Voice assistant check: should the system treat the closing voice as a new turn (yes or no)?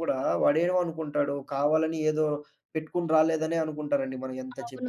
yes